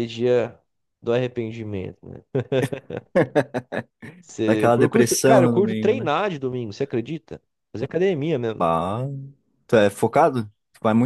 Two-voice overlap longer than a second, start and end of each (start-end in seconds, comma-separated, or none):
4.5-6.1